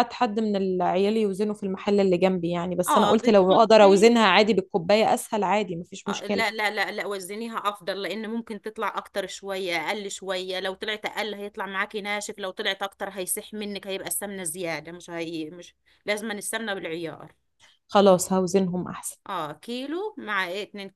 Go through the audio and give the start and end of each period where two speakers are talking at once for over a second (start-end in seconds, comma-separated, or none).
2.9-4.1